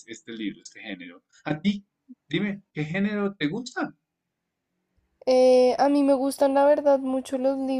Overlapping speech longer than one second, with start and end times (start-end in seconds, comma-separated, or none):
none